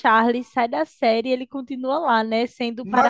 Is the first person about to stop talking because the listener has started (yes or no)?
no